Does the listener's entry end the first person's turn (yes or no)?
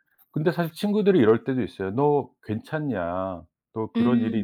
no